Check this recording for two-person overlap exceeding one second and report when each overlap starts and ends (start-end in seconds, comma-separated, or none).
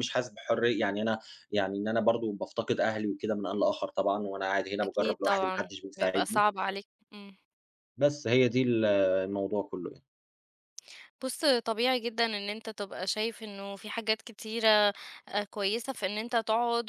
4.8-6.5